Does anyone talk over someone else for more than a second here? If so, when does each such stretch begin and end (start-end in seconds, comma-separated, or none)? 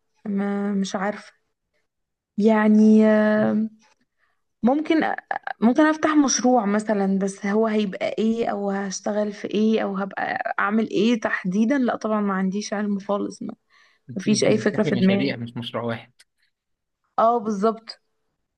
14.2-15.4